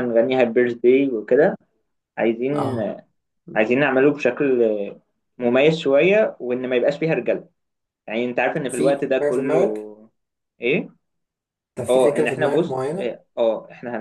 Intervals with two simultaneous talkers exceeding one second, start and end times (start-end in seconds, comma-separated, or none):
8.7-9.9, 11.9-13.2